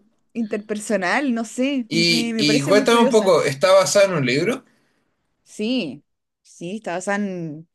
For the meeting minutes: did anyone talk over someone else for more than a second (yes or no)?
yes